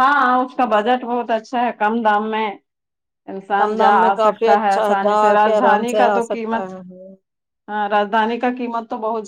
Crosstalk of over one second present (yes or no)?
yes